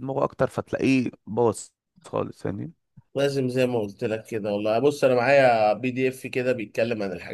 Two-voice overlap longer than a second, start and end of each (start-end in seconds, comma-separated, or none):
none